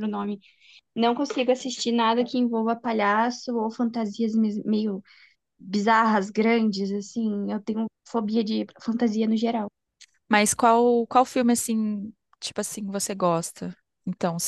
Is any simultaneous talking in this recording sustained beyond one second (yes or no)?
no